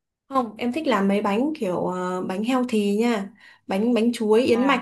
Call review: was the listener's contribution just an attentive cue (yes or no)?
yes